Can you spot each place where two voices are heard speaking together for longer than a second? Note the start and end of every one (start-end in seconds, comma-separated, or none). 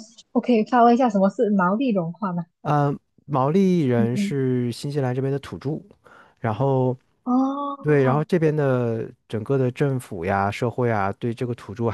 none